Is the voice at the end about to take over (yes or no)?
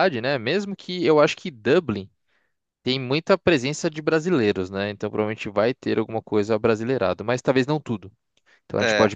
no